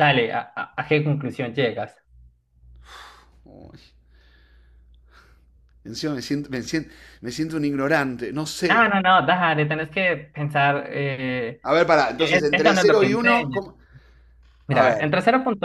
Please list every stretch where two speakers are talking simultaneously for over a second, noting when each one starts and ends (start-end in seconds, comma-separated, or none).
12.2-13.6